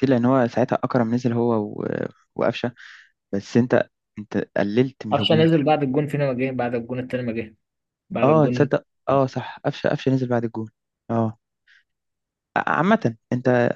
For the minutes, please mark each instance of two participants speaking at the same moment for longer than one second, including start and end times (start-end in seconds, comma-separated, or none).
none